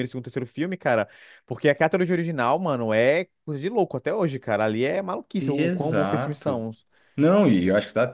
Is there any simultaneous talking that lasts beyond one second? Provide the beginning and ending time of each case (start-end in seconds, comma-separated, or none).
5.4-6.6